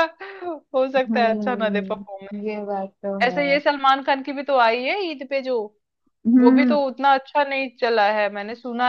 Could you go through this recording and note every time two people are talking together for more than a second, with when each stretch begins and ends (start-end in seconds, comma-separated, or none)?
1.1-2.4